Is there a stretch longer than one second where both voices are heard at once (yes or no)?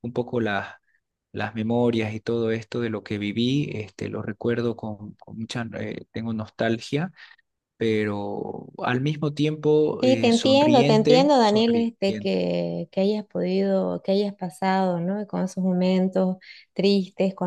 yes